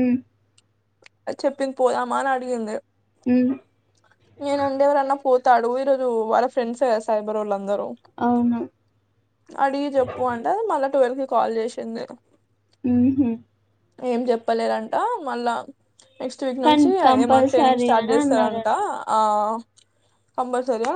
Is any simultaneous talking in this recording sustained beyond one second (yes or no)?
yes